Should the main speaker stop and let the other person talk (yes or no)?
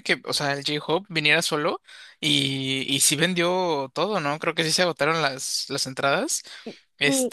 yes